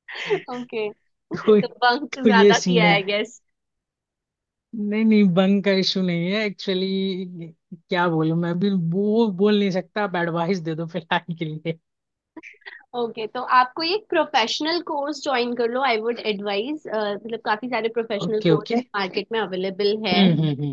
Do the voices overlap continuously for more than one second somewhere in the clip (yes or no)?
yes